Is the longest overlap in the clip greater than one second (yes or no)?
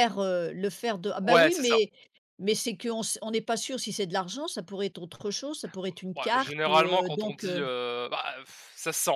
yes